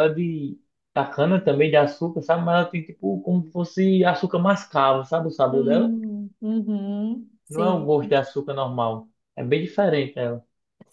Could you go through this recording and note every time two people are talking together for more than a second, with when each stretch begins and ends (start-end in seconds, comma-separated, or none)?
none